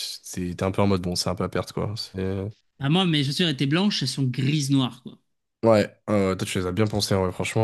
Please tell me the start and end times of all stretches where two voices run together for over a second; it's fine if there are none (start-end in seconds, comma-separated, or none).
none